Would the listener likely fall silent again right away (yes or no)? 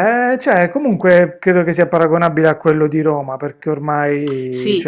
no